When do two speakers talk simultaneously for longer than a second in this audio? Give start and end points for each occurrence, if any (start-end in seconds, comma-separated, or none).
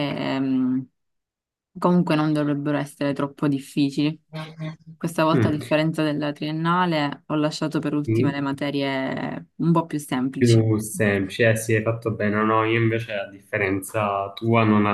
none